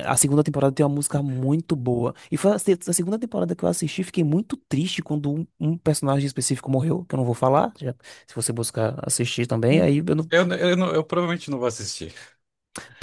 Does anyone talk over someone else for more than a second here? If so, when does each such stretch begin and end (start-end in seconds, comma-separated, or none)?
none